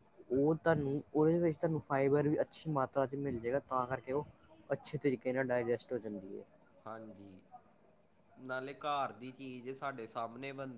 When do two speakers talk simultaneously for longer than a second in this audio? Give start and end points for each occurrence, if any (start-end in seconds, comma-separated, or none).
none